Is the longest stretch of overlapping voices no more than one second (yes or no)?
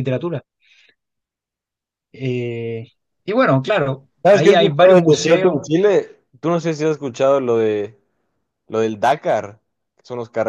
no